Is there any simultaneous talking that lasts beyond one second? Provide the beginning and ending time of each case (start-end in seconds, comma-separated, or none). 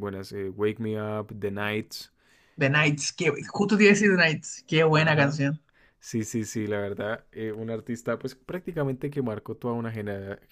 none